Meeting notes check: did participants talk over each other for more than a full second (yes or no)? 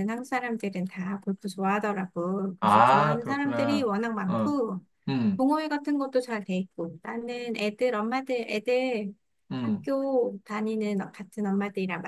yes